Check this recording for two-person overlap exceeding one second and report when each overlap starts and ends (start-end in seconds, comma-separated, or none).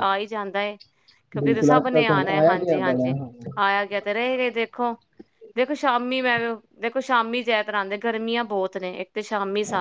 1.4-3.1